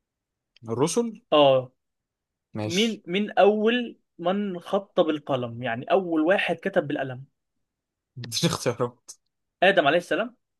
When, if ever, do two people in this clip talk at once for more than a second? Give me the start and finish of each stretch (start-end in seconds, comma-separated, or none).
none